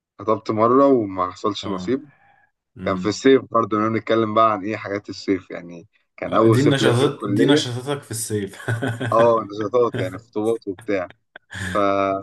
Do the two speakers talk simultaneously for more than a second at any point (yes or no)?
yes